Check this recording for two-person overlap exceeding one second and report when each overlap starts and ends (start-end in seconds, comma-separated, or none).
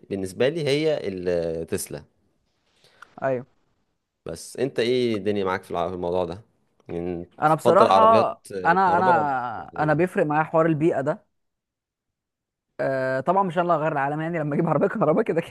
7.4-10.0